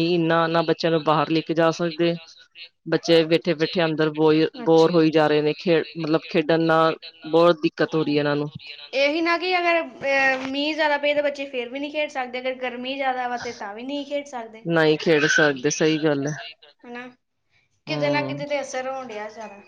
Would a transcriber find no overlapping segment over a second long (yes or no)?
no